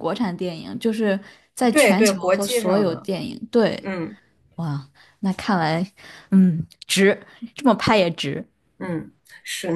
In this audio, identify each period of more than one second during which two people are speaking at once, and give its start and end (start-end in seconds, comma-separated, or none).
1.7-3.1